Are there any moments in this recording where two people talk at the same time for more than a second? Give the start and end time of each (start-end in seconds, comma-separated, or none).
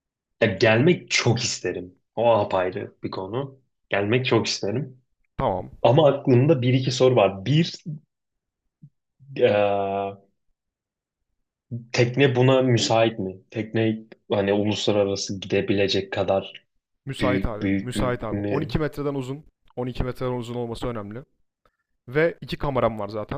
17.2-18.8